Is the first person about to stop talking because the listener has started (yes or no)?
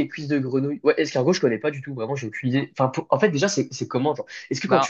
no